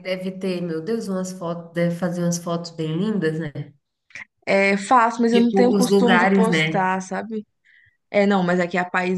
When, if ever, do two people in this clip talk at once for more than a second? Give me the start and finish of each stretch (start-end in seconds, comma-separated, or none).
5.3-6.9